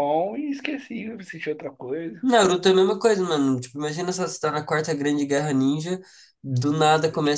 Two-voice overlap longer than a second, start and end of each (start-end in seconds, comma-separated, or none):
none